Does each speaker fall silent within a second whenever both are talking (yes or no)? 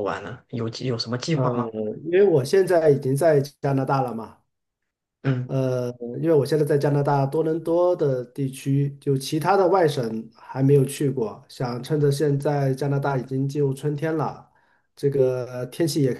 yes